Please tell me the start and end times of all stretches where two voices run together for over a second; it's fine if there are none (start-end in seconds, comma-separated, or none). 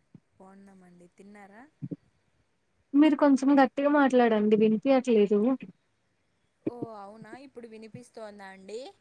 none